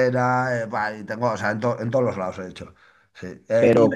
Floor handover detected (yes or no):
no